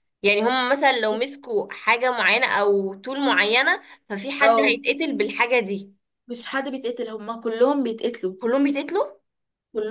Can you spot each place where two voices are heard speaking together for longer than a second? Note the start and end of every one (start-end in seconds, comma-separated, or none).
none